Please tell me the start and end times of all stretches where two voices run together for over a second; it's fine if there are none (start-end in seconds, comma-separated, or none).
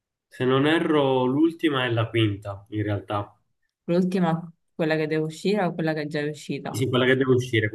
none